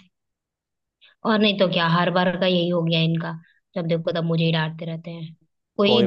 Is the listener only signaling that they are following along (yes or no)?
yes